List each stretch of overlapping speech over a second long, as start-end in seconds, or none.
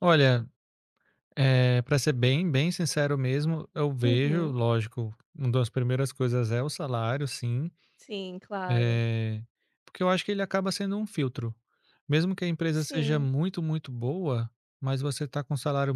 none